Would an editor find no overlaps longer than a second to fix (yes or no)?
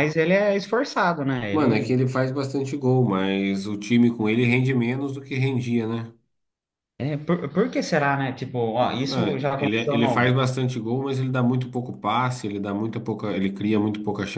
no